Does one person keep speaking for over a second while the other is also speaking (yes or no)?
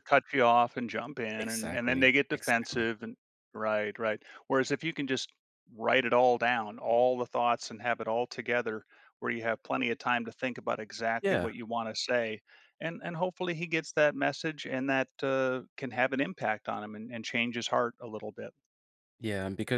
yes